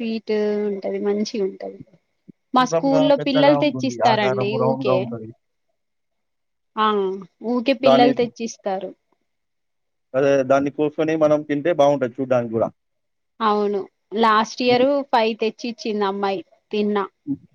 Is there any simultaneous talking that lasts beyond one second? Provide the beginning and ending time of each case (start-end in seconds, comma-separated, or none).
2.6-5.0